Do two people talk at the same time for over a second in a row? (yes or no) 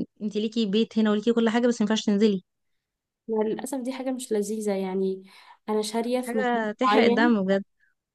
yes